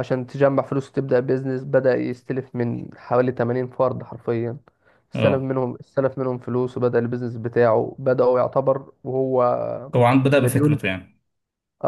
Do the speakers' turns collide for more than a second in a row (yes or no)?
no